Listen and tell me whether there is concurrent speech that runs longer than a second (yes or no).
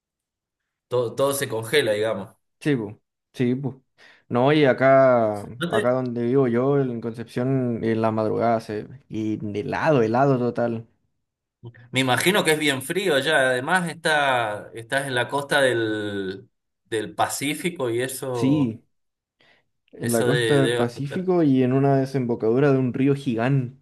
yes